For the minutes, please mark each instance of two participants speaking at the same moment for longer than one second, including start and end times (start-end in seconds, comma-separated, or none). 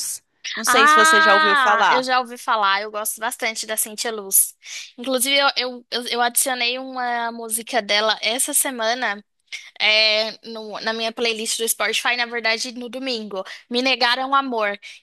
0.7-2.1